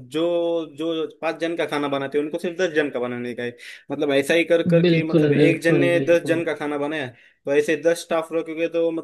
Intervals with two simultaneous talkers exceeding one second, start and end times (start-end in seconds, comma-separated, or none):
4.8-6.4